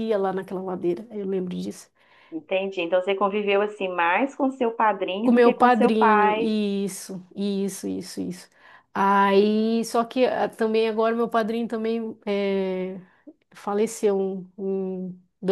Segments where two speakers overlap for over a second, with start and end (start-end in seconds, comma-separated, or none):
5.2-6.5